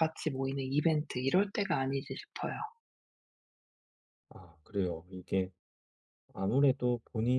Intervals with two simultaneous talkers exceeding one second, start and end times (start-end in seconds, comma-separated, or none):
none